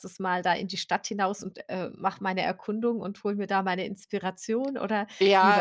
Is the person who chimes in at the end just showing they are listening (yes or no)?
no